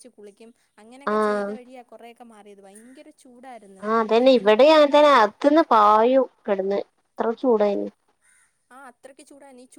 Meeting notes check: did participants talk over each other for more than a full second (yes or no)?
no